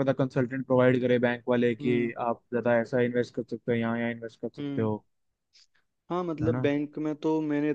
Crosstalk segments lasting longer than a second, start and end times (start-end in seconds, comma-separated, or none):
none